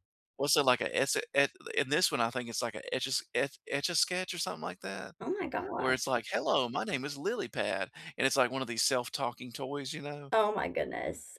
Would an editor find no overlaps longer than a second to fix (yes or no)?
yes